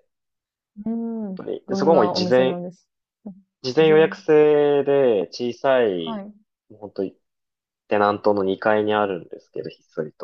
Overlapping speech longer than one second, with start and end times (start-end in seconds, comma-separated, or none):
1.1-2.6